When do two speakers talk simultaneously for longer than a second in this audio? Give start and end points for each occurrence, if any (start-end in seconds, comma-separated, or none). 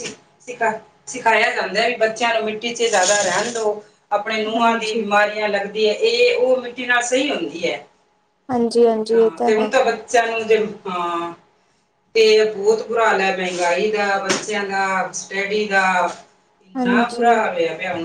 none